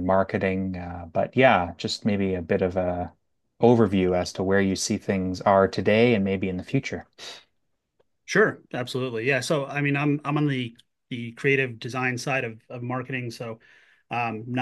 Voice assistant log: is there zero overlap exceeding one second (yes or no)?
yes